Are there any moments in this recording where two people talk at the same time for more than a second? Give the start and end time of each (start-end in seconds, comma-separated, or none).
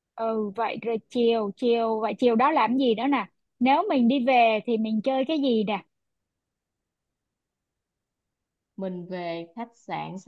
none